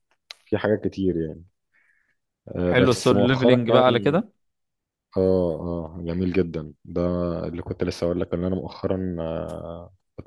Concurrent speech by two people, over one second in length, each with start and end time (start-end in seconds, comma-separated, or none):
2.6-4.2